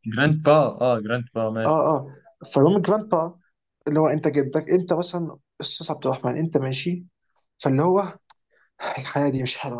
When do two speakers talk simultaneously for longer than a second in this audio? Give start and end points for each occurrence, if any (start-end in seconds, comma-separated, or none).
none